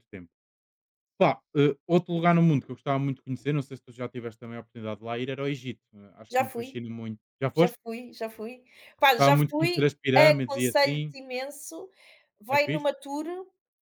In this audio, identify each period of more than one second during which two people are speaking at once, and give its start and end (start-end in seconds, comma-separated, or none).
9.1-11.1